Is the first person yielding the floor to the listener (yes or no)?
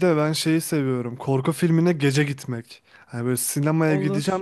no